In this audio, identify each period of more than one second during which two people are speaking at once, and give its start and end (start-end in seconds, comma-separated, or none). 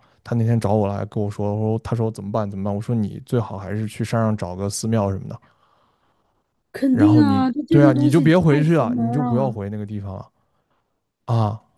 6.9-9.6